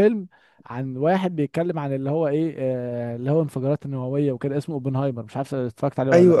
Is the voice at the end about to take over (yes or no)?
yes